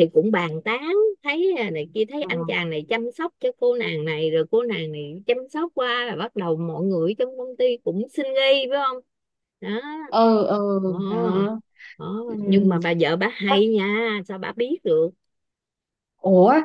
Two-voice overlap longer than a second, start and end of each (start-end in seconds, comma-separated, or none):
none